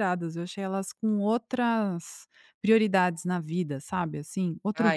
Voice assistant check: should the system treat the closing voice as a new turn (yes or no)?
yes